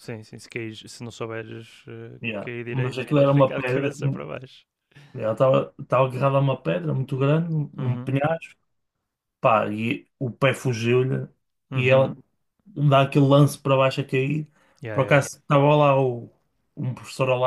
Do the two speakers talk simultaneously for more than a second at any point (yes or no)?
yes